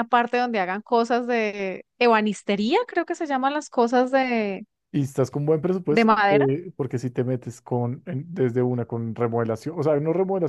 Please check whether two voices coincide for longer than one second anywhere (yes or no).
no